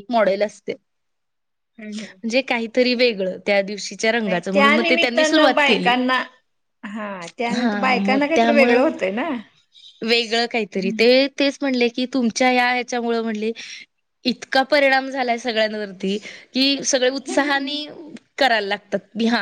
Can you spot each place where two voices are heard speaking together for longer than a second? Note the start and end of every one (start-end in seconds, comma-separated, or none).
4.2-5.9, 7.6-8.9